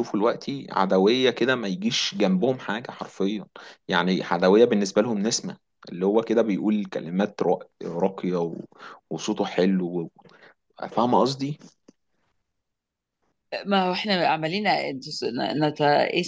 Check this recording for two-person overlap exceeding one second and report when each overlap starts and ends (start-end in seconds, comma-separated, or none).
none